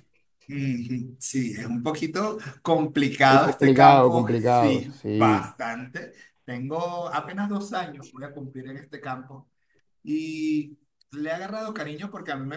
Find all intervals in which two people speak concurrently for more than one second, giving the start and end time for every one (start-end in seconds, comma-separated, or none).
3.3-5.5